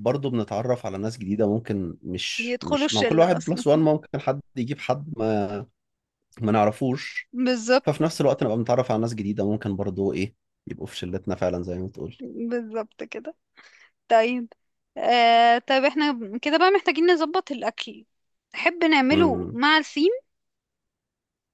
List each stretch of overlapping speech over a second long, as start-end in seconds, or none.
2.4-3.6